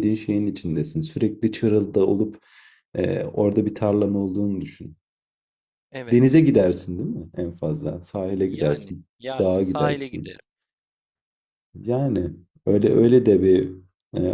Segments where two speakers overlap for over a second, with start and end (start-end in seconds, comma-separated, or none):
8.5-10.3